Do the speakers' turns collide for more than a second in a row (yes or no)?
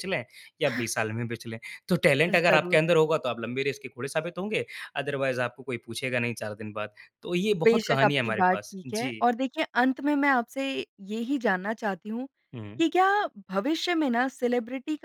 yes